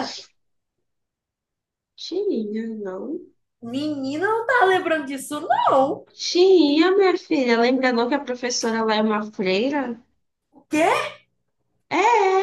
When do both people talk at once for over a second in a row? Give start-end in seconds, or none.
none